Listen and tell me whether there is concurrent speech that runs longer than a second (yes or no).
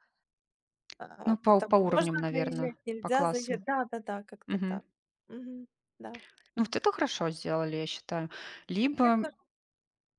yes